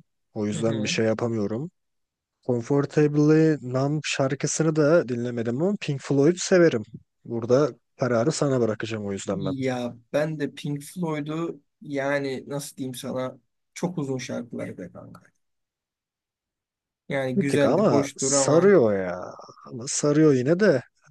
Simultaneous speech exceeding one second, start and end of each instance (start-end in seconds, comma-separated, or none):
17.4-18.8